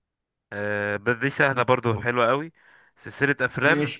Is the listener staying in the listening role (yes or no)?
yes